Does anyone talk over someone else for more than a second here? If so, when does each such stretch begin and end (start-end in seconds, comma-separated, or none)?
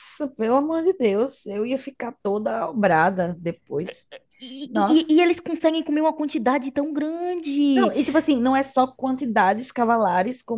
none